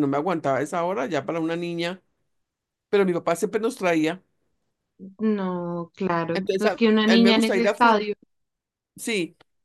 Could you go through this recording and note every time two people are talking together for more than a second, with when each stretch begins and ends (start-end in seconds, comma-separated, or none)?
6.3-8.1